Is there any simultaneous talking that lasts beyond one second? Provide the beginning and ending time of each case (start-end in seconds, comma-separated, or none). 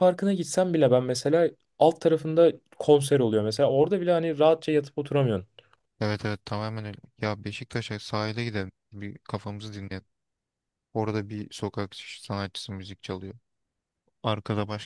none